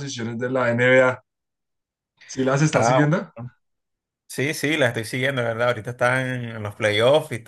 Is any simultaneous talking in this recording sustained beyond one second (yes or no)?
no